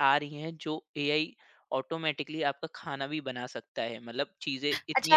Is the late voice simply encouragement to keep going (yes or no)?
no